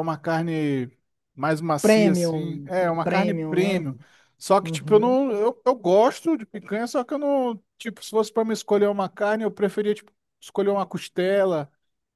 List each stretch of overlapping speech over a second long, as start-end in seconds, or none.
1.8-3.8